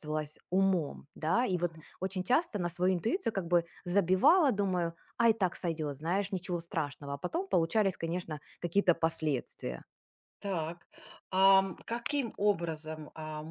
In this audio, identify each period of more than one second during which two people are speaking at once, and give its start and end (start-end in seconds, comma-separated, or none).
none